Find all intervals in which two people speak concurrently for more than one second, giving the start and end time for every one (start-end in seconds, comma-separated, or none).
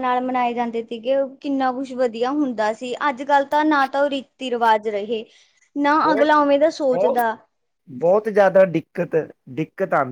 none